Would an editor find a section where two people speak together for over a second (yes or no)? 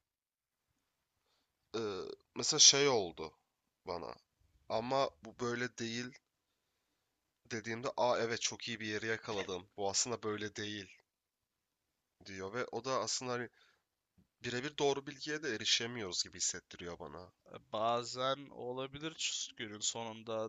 no